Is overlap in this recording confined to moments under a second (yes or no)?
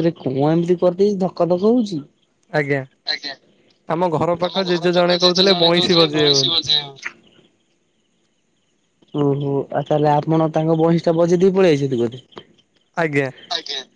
no